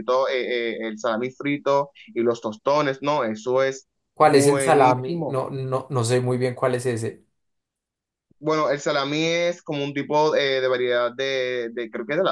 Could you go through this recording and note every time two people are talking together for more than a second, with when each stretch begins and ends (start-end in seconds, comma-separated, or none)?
4.1-5.4